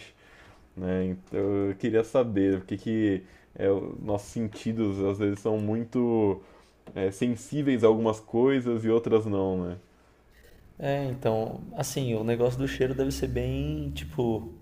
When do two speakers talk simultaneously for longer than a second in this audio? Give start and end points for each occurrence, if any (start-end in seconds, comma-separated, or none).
none